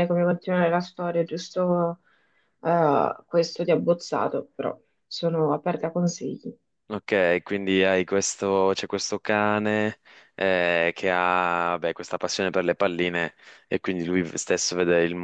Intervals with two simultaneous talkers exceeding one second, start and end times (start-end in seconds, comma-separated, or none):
none